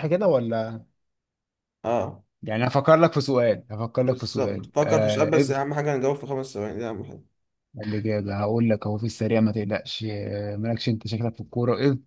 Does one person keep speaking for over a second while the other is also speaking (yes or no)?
yes